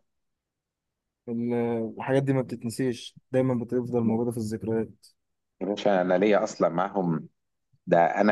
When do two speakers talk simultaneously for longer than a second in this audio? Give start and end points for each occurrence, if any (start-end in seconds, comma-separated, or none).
none